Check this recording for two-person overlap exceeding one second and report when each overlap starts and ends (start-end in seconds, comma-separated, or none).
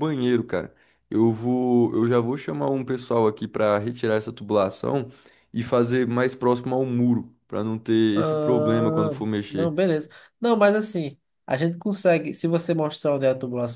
8.1-9.7